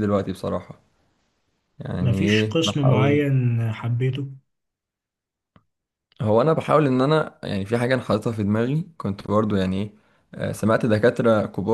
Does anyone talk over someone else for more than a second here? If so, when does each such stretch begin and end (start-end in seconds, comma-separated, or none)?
2.0-3.3